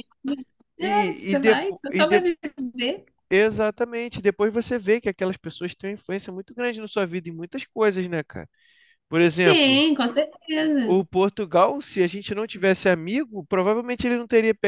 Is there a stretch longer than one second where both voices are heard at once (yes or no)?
yes